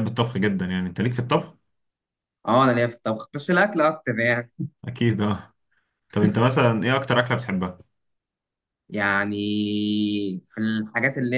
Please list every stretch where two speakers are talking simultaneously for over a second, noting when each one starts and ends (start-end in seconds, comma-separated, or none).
none